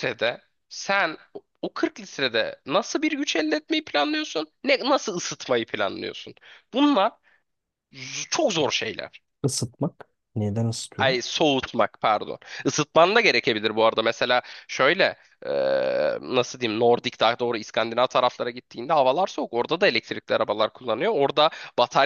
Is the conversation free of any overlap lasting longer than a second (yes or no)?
yes